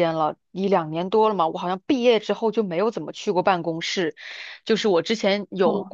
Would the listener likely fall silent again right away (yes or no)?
yes